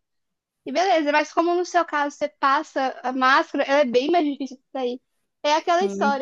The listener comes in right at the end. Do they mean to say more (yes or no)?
no